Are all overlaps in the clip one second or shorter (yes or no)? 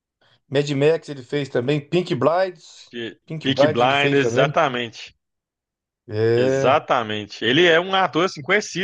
no